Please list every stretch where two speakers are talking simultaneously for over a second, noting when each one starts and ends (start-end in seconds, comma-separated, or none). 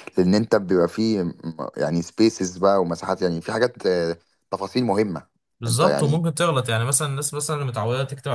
none